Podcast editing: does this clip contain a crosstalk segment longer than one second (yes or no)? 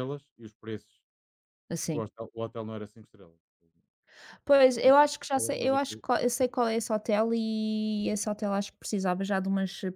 yes